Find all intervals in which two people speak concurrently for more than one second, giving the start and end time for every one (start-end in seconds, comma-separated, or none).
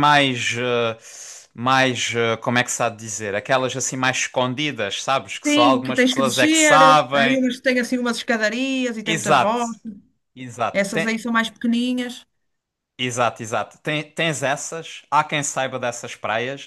5.4-7.4